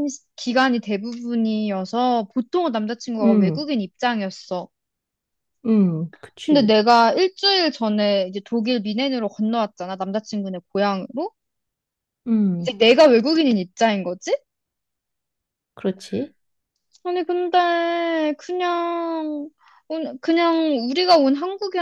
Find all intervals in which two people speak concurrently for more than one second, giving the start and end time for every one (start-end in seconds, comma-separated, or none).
none